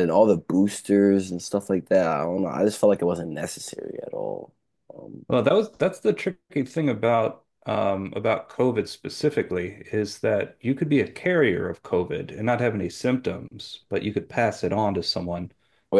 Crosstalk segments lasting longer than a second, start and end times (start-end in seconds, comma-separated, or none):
none